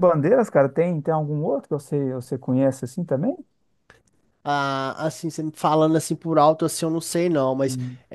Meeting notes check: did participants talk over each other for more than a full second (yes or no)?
no